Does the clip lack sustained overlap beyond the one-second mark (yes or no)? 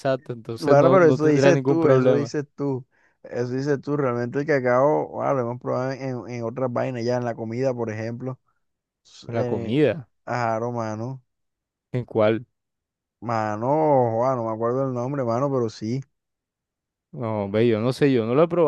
no